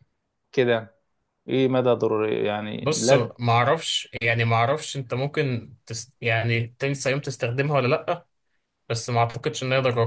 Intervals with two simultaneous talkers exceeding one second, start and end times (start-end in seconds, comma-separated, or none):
none